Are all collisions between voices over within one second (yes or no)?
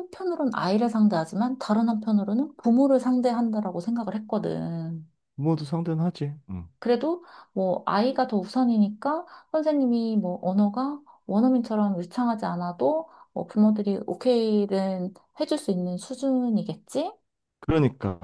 yes